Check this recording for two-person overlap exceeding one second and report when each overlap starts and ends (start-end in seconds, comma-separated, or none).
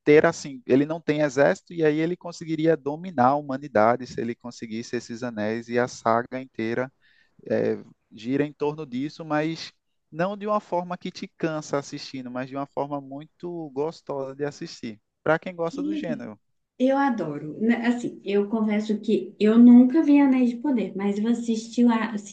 none